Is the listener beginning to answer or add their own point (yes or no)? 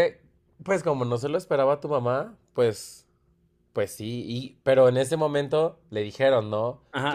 yes